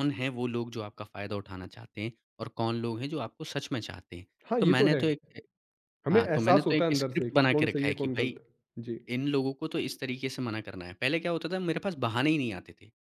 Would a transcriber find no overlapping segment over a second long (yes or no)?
no